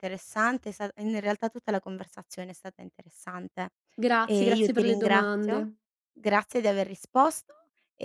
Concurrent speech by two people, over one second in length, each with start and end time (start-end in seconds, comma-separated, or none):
4.2-5.7